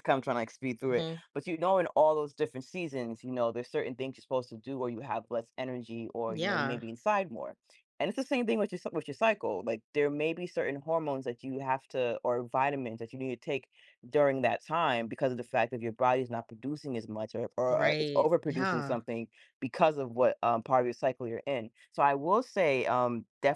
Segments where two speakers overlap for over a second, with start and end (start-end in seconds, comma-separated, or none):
17.7-19.0